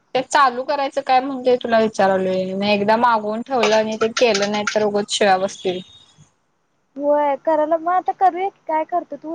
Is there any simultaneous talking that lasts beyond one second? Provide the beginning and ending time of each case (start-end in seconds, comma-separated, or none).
none